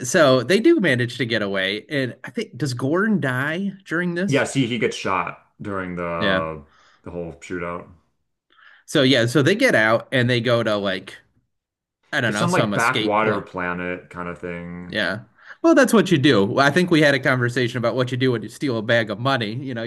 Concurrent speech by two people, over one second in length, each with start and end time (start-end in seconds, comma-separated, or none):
12.3-13.5